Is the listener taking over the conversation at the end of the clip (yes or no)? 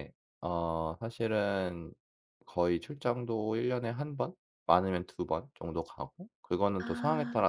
no